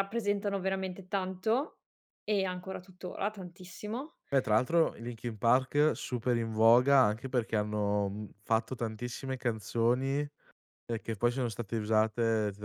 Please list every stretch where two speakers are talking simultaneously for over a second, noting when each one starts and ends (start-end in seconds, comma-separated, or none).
none